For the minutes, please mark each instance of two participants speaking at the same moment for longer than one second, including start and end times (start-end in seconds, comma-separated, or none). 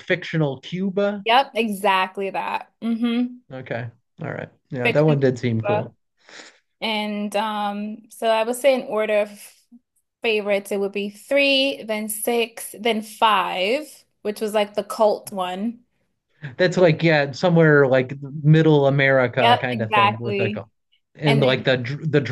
19.4-20.6